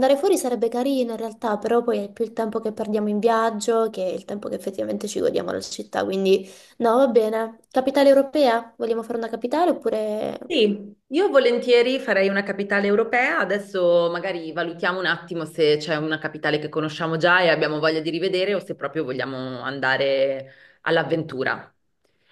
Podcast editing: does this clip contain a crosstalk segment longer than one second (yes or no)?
no